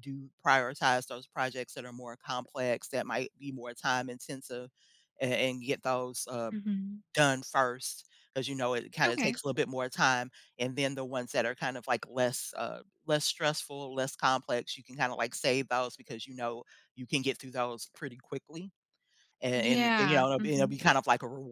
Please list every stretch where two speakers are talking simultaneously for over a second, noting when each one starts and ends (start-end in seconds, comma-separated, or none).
19.5-20.8